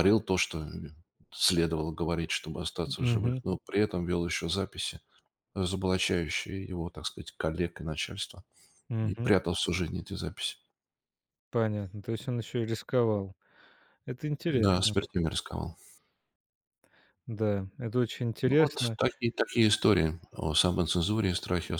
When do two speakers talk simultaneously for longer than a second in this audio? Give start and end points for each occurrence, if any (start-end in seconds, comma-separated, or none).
none